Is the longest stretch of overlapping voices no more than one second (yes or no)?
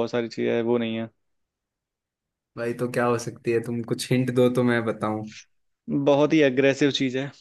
yes